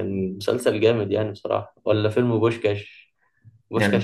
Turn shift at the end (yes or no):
no